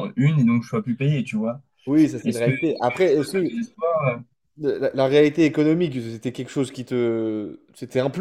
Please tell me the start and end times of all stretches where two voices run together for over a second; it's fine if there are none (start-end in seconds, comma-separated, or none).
2.2-3.5